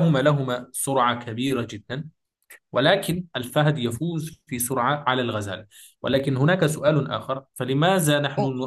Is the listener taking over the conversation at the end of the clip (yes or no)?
no